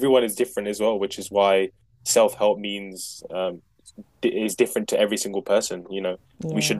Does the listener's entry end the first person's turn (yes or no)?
no